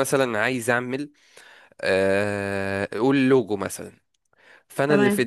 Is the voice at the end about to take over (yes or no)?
no